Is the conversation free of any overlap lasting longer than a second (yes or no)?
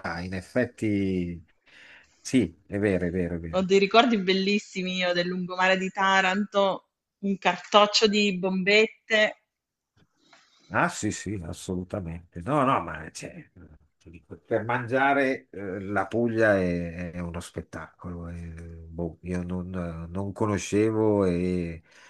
yes